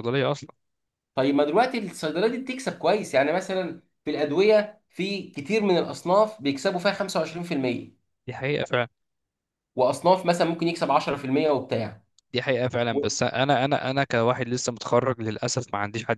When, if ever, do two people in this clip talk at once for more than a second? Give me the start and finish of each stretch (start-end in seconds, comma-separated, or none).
none